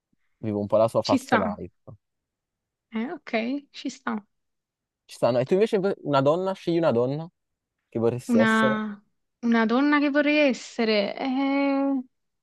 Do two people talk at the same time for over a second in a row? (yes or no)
no